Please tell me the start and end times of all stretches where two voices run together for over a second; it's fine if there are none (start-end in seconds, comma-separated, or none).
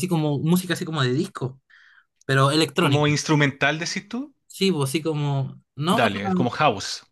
none